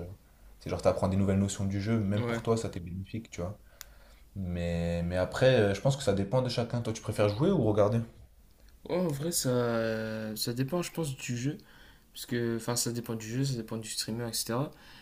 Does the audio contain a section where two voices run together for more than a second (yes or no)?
no